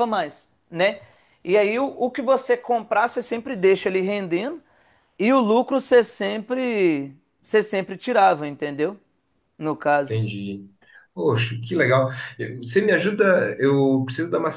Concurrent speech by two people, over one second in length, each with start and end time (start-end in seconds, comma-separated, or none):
none